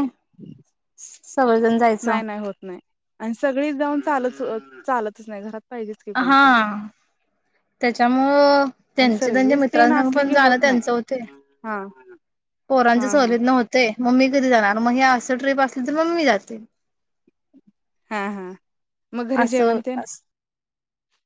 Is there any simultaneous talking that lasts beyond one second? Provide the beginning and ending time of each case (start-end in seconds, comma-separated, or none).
9.0-10.8